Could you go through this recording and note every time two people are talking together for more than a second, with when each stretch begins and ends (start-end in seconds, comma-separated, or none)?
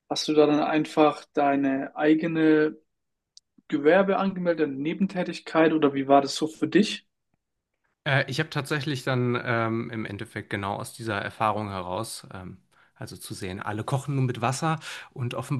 none